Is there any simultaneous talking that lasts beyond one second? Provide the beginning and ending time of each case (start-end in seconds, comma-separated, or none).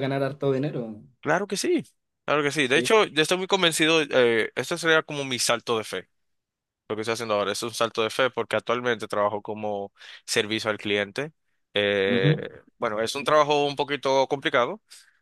none